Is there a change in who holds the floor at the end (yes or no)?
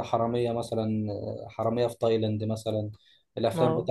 no